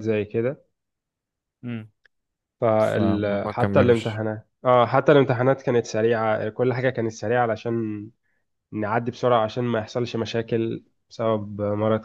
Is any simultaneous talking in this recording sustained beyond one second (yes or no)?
yes